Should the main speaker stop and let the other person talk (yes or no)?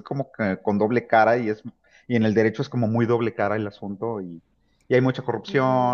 no